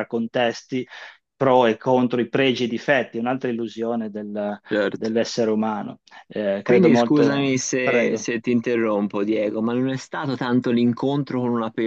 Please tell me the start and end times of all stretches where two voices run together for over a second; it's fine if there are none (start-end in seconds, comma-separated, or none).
6.6-8.3